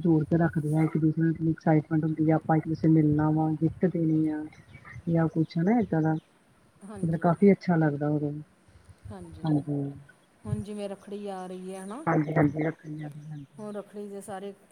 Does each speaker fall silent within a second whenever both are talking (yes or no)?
yes